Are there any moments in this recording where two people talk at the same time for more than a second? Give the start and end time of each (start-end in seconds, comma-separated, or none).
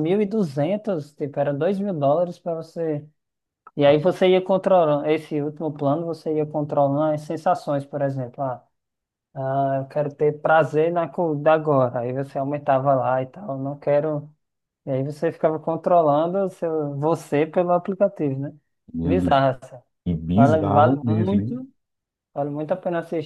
20.3-21.6